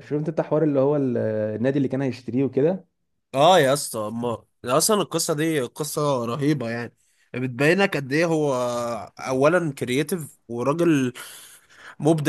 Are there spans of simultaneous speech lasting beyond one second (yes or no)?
no